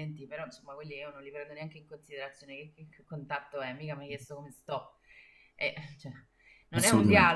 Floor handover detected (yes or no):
no